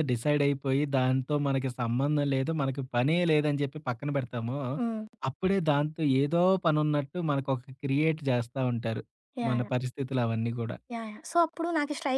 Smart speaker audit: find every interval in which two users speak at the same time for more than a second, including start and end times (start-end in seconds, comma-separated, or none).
none